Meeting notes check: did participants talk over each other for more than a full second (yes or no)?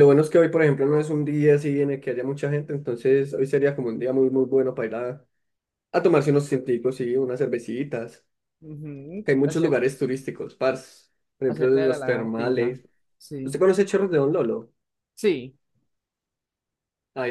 yes